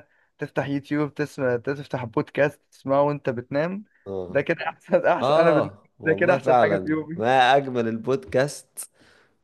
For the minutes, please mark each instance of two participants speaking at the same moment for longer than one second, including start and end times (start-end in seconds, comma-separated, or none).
5.2-7.2